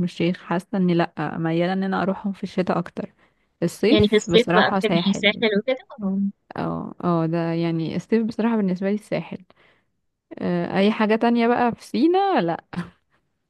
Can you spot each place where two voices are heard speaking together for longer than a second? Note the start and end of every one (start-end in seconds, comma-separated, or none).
3.9-5.2